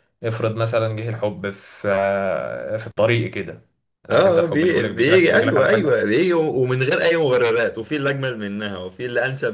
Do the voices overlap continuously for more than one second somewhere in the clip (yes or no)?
yes